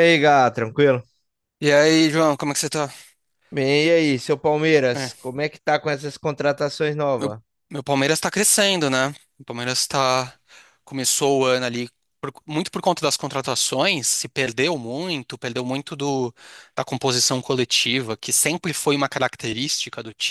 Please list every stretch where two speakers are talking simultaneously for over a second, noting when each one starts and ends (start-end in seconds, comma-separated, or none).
none